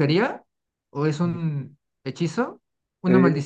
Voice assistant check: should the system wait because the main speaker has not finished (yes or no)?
no